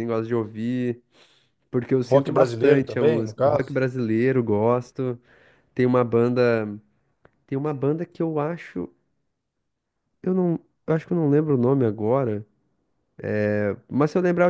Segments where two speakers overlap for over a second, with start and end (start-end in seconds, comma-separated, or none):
2.1-3.7